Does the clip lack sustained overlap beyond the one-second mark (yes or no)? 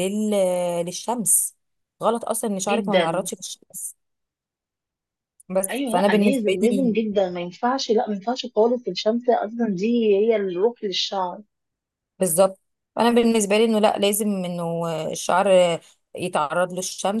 no